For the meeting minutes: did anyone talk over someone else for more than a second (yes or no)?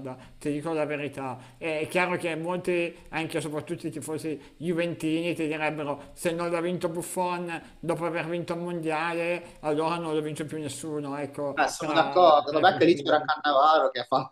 yes